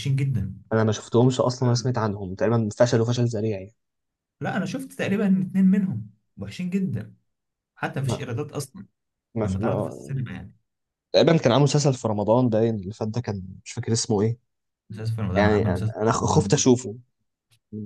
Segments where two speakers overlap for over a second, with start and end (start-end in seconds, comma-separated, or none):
15.4-16.6